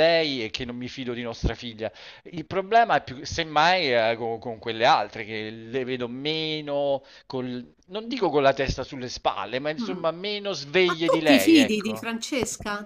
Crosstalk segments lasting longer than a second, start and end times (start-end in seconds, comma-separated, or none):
10.8-12.1